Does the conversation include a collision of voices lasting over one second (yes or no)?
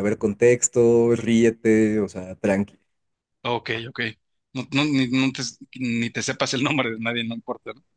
no